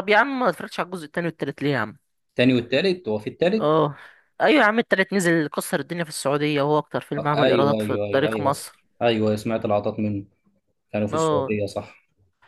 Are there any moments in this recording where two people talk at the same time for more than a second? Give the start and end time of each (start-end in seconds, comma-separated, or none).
7.2-8.5